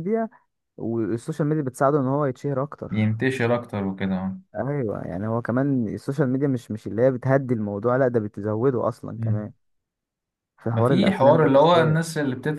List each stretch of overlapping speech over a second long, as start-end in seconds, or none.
10.7-12.0